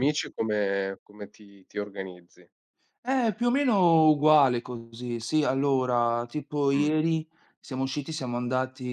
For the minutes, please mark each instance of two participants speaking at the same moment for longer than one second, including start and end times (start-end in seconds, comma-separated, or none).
none